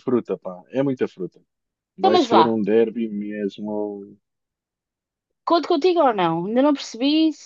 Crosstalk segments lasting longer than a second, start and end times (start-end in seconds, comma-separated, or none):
none